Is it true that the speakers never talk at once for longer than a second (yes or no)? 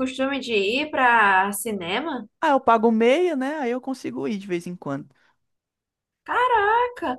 yes